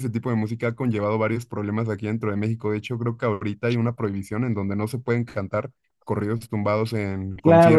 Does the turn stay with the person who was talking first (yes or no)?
no